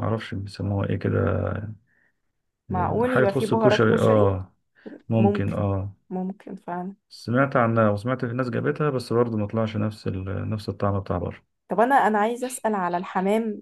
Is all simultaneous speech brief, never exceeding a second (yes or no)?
no